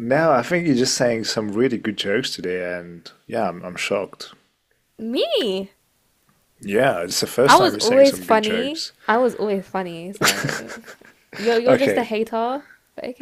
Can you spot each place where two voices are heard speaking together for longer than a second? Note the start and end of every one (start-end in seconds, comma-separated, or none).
7.4-8.9